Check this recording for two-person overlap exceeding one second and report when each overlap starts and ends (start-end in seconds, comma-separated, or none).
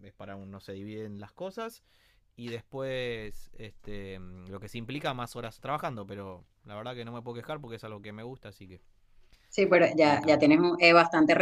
none